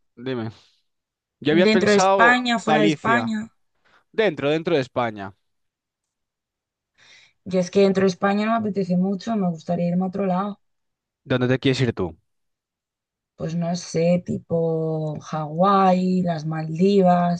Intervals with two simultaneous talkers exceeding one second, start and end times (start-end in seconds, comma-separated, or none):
1.7-3.3